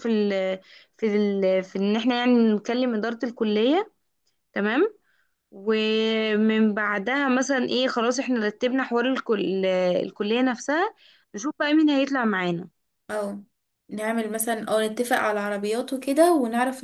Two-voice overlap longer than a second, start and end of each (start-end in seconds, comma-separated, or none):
none